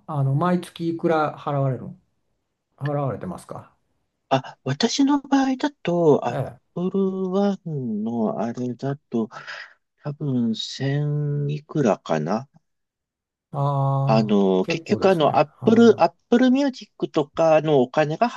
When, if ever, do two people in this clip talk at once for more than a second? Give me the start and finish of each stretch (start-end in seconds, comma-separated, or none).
14.1-16.0